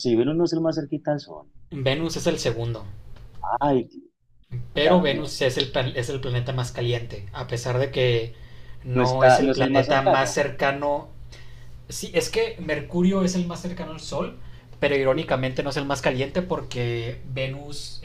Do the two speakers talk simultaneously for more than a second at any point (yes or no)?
yes